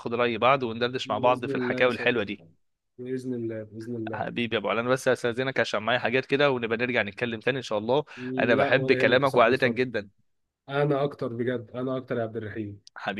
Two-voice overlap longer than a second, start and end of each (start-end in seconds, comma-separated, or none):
1.0-2.4, 8.6-9.8